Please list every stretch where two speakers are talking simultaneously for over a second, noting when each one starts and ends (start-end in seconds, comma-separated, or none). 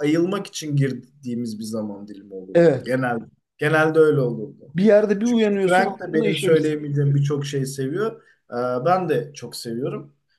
5.2-6.6